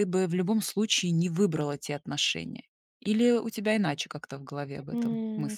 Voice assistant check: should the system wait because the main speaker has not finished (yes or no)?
no